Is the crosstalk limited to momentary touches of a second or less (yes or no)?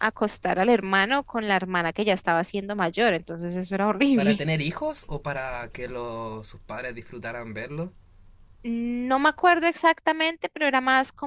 yes